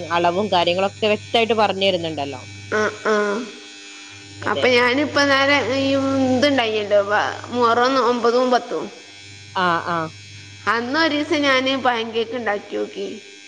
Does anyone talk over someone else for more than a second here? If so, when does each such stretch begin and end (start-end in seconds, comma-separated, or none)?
none